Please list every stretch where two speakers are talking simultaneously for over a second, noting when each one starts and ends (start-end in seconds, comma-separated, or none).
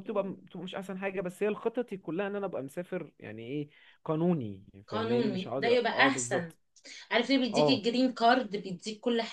4.9-6.5